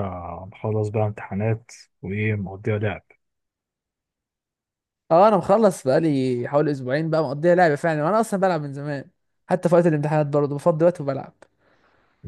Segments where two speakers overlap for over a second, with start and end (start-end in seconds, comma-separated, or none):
none